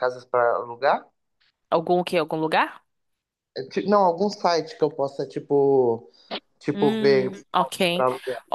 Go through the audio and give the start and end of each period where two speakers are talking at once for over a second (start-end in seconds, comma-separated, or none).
none